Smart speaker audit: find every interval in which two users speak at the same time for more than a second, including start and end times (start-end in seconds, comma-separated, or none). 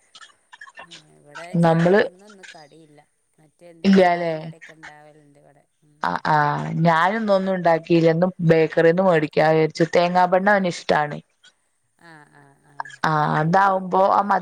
none